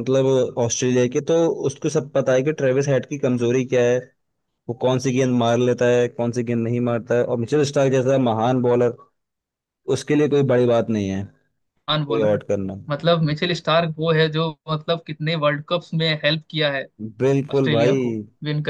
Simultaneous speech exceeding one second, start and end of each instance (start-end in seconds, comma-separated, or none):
none